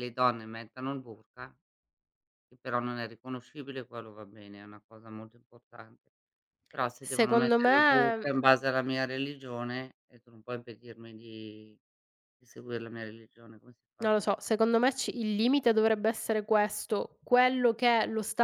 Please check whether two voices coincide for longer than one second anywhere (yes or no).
yes